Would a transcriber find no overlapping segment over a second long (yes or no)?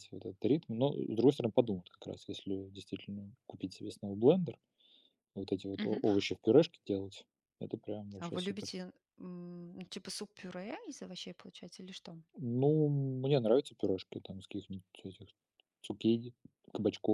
yes